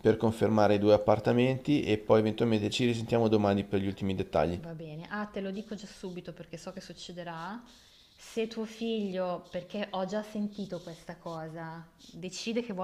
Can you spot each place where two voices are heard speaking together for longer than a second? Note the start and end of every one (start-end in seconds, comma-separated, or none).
none